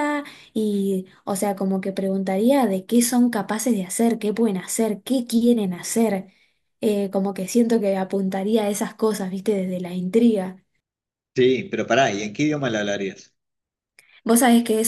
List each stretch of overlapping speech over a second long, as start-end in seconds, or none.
none